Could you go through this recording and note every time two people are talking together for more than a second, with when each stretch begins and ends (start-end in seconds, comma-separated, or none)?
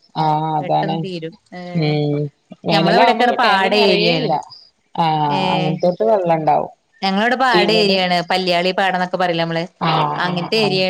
2.7-4.3